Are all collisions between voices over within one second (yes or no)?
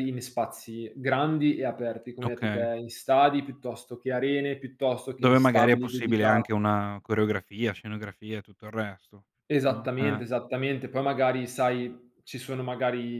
no